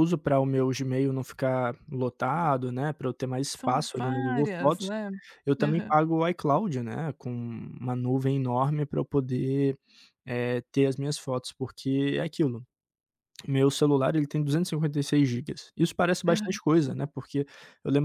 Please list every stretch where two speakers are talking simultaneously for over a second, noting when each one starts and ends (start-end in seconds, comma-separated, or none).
3.5-4.9